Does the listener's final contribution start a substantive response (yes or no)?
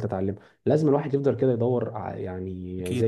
no